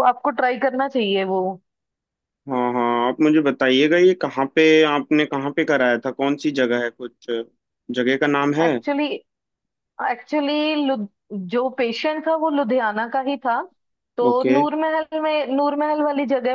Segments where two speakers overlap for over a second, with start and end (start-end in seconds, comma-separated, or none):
none